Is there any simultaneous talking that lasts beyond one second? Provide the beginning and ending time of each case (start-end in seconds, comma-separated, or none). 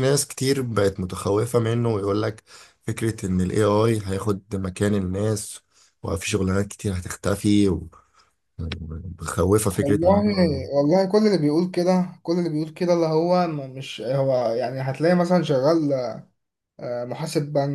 none